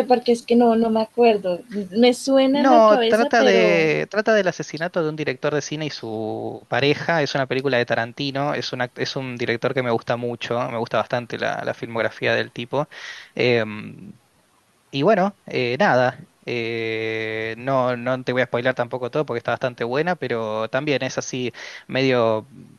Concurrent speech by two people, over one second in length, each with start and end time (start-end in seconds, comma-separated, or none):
2.5-3.9